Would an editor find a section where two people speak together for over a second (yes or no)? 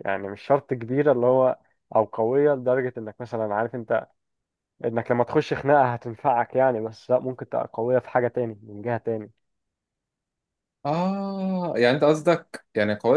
no